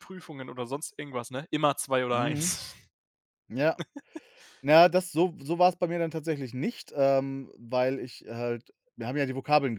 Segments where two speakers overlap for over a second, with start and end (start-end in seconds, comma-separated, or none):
none